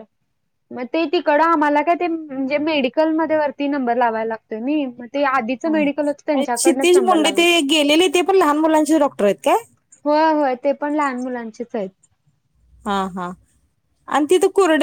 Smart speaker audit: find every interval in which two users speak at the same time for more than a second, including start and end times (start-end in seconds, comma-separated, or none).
5.7-7.4